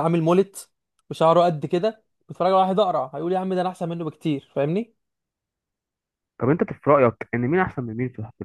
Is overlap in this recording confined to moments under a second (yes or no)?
yes